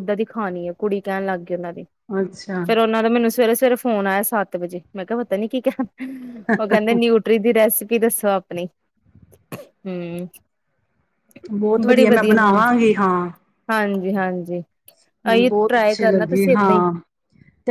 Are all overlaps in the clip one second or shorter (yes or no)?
no